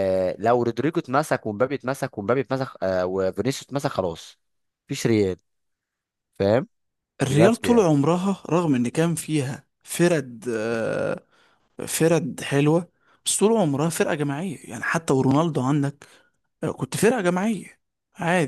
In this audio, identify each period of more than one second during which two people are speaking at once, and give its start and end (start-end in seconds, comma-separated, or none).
none